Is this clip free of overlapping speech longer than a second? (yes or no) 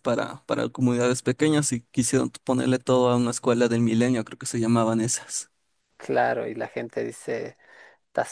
yes